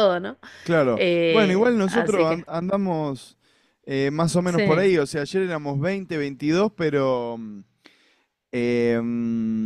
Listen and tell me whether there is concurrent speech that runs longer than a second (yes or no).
yes